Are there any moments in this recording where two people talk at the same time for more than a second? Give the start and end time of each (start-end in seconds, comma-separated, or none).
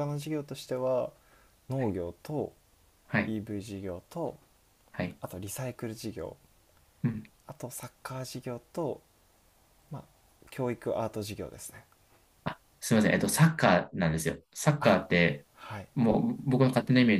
none